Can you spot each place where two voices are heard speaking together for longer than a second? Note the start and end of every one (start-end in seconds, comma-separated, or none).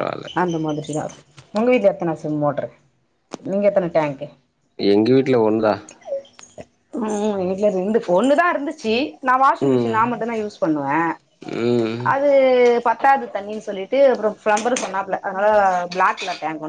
none